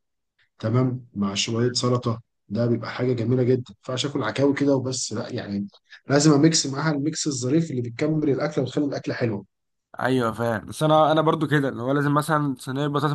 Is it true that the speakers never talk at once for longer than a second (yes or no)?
yes